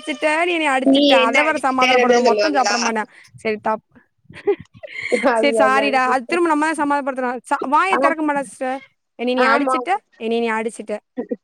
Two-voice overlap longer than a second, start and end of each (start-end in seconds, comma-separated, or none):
1.2-2.8